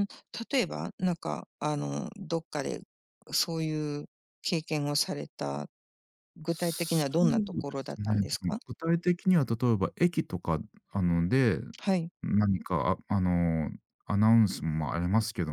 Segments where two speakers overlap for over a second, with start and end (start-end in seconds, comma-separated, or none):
6.5-8.6